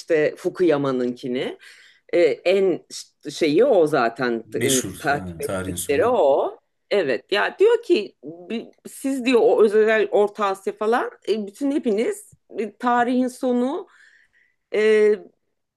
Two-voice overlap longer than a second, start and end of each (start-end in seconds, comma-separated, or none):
4.4-6.2